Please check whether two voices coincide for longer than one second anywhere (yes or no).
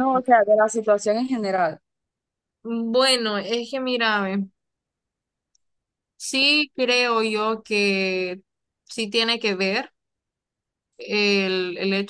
no